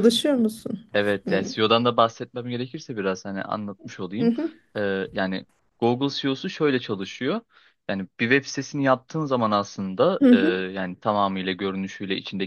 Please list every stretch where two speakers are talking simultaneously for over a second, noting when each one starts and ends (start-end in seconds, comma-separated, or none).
none